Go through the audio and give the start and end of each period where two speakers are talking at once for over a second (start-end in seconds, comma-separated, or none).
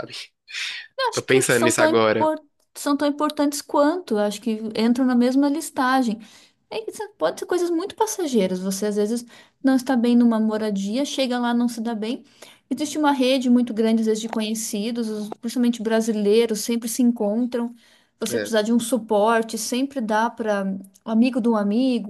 1.1-2.3